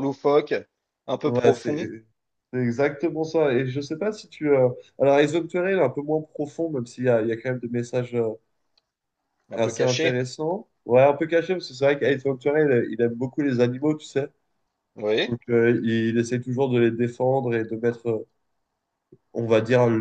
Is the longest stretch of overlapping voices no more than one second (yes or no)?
yes